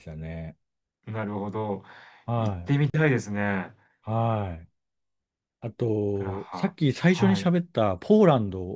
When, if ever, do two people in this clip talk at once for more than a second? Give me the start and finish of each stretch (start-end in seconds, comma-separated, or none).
6.1-7.5